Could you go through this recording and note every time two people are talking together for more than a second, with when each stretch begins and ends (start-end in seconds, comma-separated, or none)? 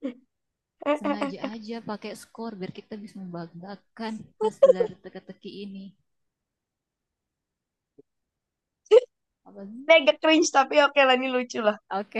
none